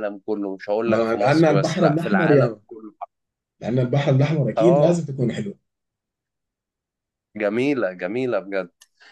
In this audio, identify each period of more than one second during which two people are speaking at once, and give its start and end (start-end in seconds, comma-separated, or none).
0.8-2.6